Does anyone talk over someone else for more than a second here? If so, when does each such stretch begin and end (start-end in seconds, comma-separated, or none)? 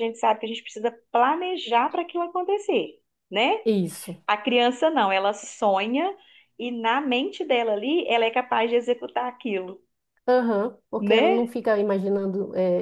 none